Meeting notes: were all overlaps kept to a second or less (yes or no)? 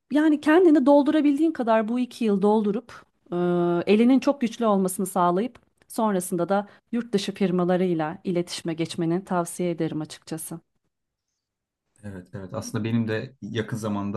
yes